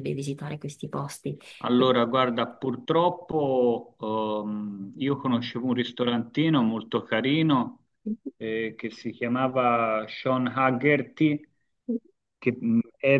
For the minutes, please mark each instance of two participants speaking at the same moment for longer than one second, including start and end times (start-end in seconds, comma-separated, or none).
none